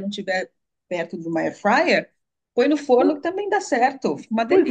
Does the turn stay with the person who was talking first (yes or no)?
no